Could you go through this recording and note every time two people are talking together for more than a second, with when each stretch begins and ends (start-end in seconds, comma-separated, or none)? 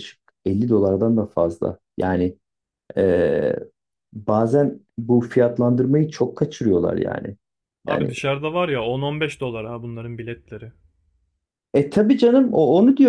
none